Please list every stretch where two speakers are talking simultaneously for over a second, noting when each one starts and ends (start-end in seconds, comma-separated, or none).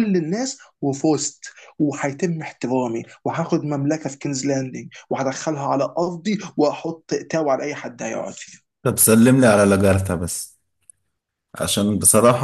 none